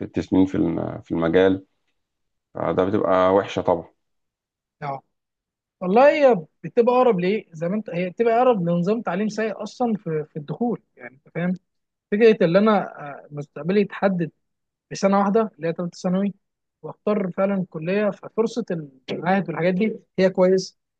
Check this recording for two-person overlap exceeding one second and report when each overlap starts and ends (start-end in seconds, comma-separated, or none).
none